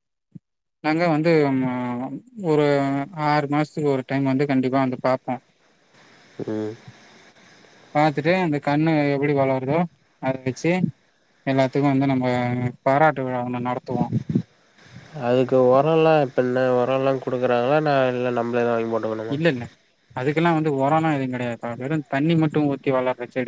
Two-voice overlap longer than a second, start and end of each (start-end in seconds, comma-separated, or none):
none